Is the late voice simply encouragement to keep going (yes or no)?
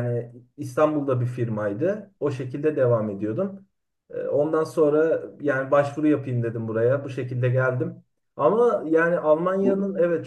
yes